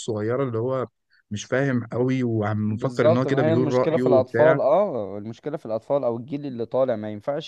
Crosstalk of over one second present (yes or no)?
yes